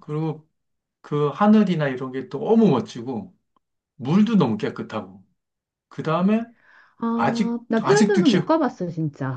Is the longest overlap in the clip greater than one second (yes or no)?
yes